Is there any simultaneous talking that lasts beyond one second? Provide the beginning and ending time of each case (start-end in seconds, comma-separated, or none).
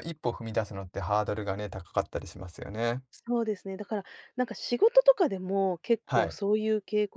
none